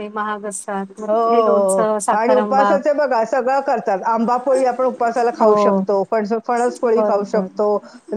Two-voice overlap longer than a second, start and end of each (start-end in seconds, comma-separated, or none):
1.1-2.8